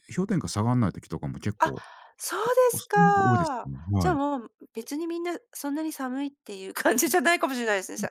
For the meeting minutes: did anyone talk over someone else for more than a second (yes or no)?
yes